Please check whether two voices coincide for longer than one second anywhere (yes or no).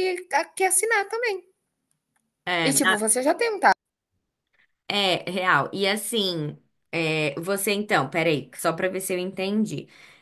no